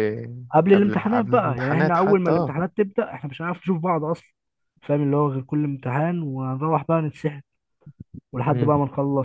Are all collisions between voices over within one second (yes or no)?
no